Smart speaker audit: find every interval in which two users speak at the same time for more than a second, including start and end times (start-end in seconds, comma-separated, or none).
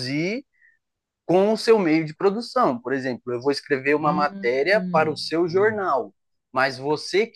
4.0-5.9